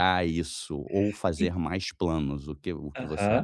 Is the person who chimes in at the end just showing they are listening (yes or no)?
no